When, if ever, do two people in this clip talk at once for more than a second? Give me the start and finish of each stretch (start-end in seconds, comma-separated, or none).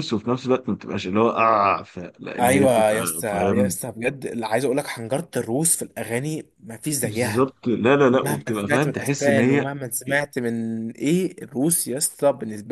2.4-3.8, 8.2-9.7